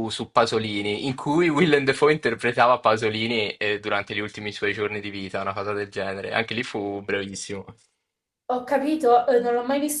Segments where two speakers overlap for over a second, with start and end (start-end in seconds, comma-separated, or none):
none